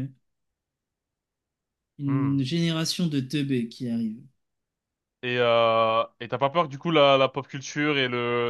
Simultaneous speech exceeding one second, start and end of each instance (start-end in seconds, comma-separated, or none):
none